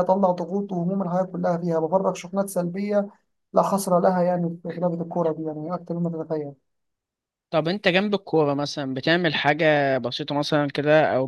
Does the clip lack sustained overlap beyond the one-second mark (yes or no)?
yes